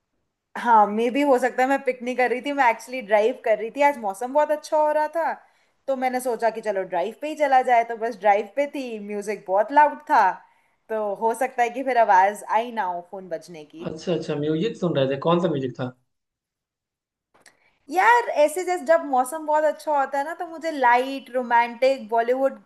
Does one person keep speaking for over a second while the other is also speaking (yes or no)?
no